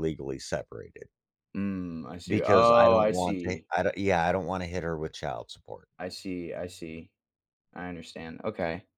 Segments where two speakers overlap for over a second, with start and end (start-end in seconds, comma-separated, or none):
2.3-3.7